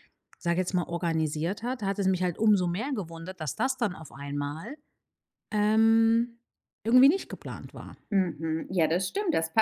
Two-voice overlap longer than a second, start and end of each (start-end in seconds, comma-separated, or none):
none